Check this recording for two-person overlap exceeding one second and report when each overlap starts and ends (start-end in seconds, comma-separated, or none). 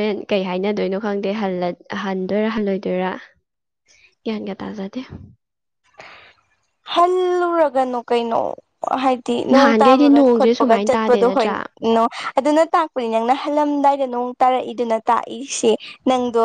9.5-11.5